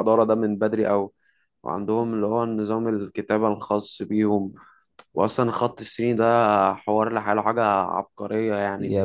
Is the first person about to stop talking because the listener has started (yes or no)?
yes